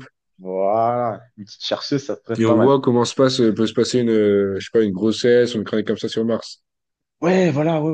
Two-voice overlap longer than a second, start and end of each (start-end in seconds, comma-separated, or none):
none